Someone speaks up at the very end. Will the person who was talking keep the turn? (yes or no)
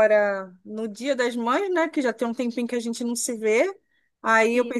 yes